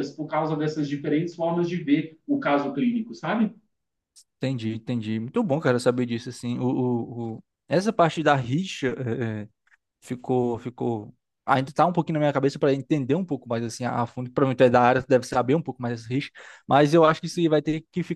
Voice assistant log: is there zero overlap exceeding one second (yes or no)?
yes